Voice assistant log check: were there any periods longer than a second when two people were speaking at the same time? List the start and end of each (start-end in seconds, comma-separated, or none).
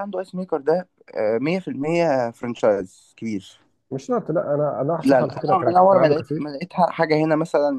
5.0-6.6